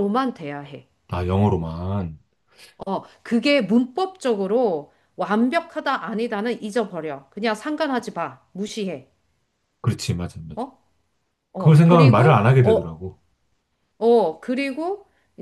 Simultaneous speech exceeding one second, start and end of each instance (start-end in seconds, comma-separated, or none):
11.6-13.0